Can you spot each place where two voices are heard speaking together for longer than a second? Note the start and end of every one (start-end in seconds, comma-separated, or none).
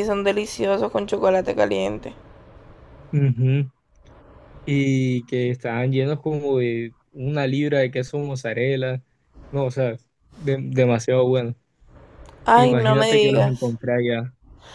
12.5-13.8